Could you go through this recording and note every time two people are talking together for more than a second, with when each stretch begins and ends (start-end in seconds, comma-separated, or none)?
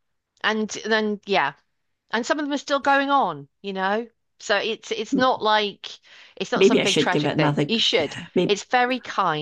6.5-8.6